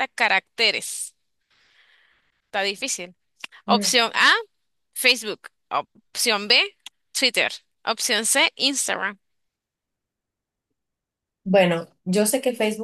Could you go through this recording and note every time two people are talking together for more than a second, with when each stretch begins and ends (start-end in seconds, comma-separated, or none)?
none